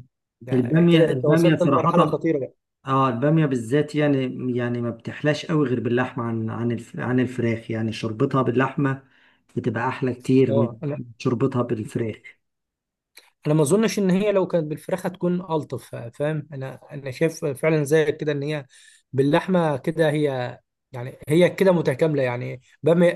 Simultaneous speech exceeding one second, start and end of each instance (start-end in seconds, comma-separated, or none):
0.5-2.2